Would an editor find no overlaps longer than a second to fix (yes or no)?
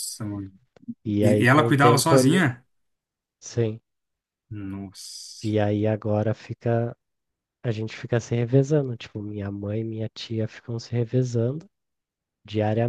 no